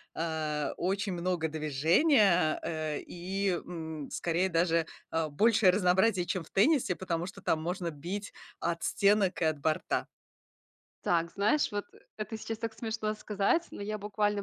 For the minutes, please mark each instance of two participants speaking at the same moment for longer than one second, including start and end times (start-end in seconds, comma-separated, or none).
none